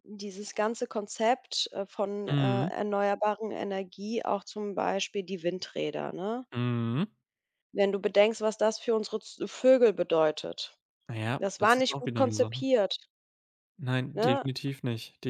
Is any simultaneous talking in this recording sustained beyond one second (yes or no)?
yes